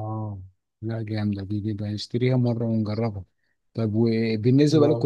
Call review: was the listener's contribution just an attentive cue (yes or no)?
yes